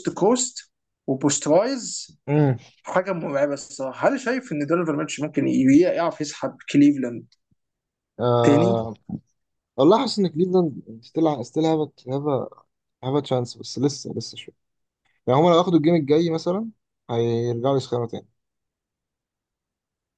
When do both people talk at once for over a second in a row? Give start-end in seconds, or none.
none